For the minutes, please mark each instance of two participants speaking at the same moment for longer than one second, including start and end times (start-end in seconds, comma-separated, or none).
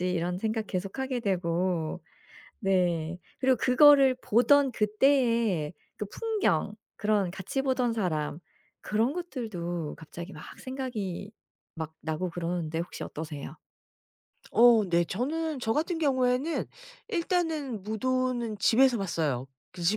none